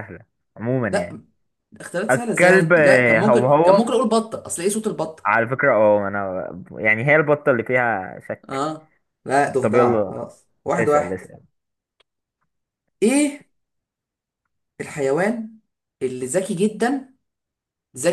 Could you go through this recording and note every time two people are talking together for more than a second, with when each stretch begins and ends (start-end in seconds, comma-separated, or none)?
2.1-3.8